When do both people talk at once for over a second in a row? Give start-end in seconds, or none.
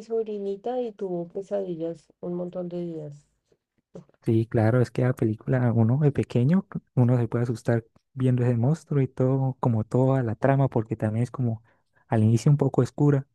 none